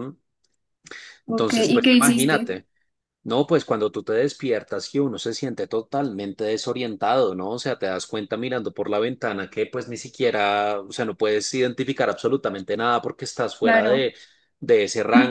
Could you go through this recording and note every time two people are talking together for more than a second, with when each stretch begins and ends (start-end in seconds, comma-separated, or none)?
1.3-2.6